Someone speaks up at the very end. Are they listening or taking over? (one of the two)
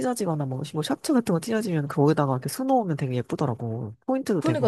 taking over